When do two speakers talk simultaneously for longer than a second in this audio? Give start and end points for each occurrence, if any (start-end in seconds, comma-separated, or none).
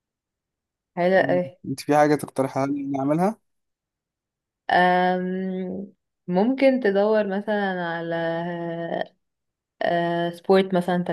none